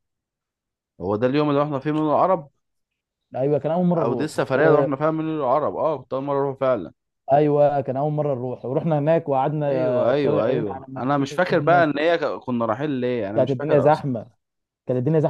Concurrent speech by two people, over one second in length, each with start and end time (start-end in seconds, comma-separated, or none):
9.7-11.9